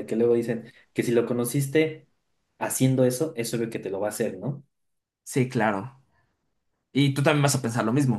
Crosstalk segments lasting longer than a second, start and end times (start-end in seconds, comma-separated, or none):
none